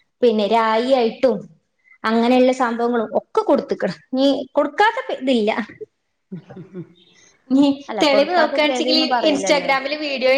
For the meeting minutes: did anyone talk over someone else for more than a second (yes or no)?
yes